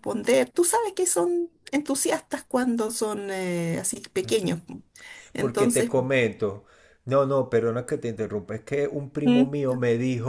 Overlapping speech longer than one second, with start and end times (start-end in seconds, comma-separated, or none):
none